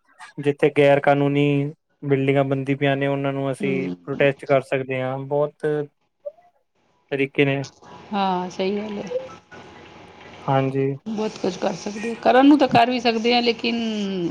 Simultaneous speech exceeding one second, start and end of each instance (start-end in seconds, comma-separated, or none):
none